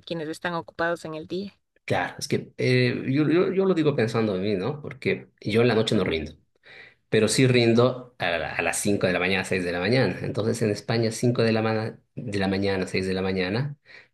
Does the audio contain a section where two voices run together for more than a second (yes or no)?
no